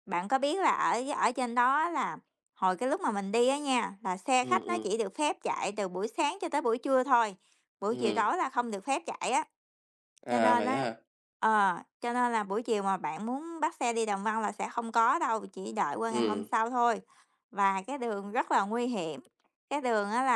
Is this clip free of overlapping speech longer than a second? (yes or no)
yes